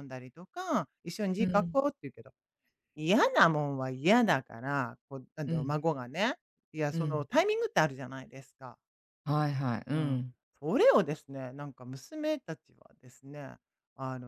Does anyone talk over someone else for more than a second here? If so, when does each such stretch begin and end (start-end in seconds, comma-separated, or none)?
none